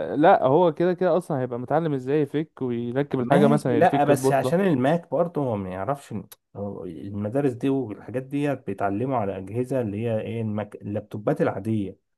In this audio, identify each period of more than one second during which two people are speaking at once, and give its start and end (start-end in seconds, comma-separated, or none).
3.2-4.5